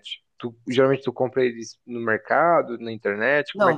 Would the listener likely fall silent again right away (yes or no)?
no